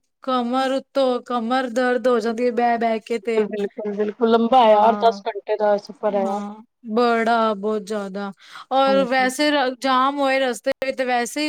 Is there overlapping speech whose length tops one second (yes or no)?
no